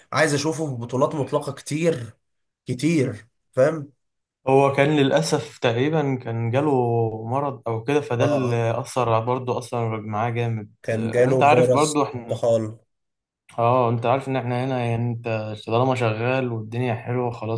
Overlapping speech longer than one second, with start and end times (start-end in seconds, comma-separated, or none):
10.8-12.4